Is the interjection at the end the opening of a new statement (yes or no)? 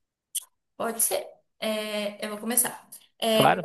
no